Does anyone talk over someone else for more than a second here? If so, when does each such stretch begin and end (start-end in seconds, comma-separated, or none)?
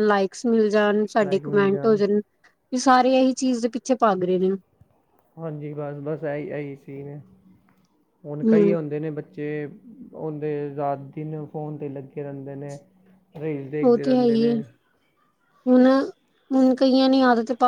none